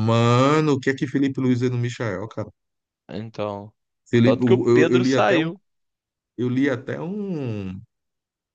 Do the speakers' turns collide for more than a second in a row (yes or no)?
yes